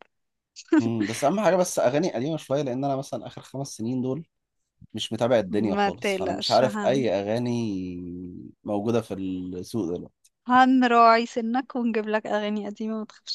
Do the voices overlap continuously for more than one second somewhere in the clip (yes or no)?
yes